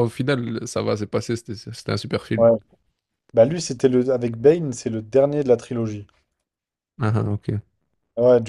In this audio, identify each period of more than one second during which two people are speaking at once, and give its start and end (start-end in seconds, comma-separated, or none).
none